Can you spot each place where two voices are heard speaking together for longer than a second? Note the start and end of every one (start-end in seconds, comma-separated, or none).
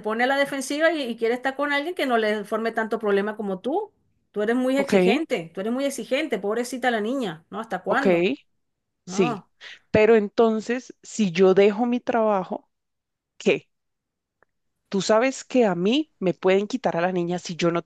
none